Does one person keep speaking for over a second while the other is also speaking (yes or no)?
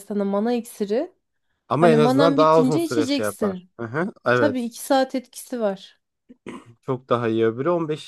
yes